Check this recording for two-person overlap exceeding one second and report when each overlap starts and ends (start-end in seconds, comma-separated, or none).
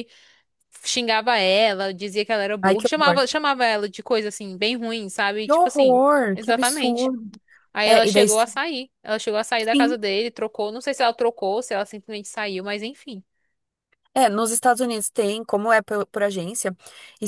5.4-7.1